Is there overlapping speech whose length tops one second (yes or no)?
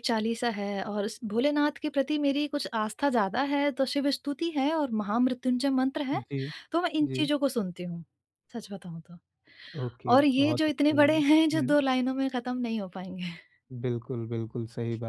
yes